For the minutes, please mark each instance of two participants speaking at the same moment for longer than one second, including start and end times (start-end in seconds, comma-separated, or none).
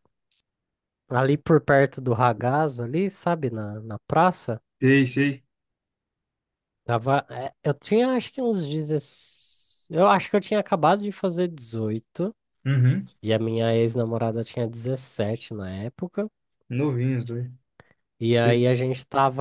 none